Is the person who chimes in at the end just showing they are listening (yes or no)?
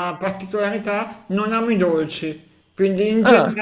yes